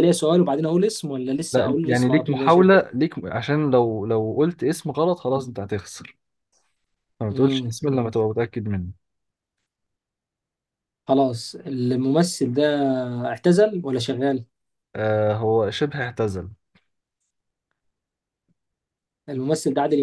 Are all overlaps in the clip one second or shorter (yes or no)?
no